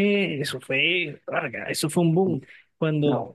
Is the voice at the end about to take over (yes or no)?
no